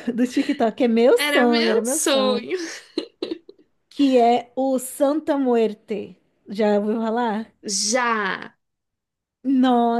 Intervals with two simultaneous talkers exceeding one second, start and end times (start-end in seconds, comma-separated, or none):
1.2-2.5